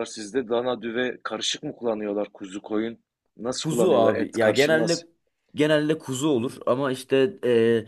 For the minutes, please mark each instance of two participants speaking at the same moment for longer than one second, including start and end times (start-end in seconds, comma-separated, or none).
3.6-5.0